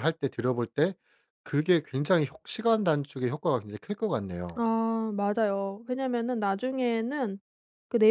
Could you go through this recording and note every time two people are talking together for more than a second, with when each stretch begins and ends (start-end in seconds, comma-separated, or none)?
none